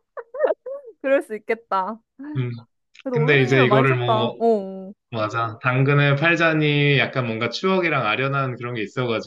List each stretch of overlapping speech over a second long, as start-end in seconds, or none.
3.1-4.4